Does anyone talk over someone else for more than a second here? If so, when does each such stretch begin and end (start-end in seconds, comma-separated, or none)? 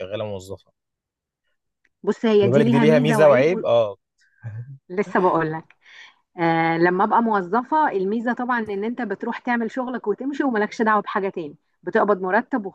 2.4-3.6